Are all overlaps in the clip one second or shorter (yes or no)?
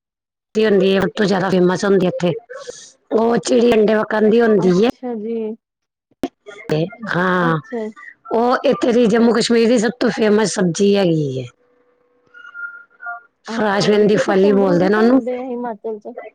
no